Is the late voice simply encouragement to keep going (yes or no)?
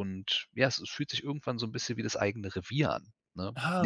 yes